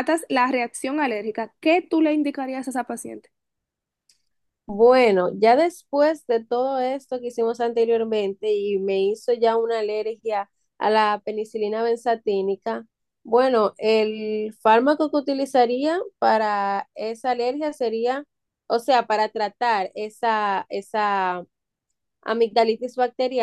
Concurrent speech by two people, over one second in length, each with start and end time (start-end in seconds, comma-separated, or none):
none